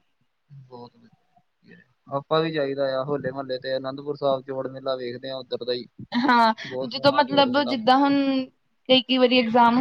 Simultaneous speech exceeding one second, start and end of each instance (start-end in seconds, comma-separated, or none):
6.9-8.1